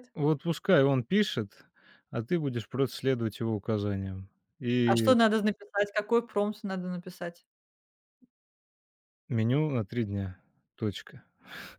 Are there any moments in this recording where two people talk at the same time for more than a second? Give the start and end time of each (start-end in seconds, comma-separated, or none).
none